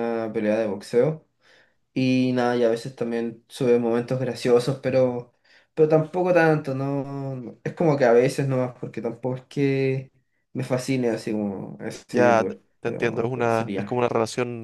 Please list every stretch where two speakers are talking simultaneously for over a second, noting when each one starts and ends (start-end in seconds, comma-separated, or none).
12.1-14.0